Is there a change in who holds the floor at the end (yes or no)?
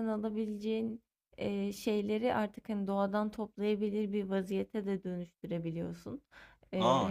yes